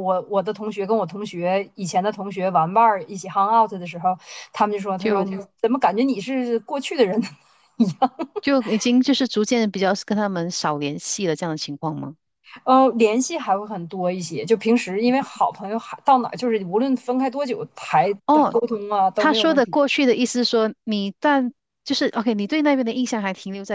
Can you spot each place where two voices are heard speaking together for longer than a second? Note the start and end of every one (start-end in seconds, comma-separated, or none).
none